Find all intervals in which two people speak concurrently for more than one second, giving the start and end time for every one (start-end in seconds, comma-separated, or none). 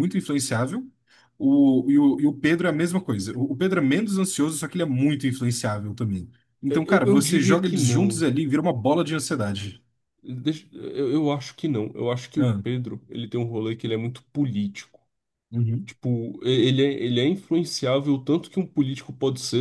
6.7-8.3